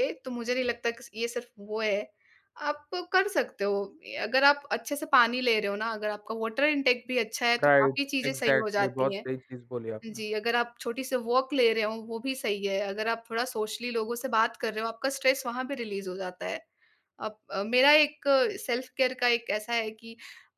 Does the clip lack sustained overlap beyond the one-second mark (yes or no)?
no